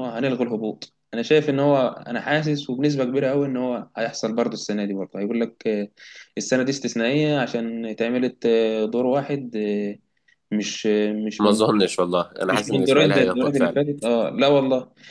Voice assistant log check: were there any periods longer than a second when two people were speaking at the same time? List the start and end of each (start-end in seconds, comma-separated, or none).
12.4-13.8